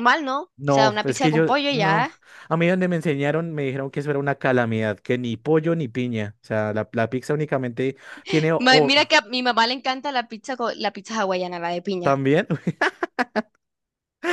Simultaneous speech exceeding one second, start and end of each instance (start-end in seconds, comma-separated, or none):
0.6-2.1